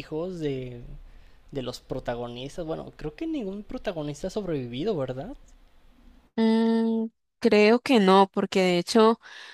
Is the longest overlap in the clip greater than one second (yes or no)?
no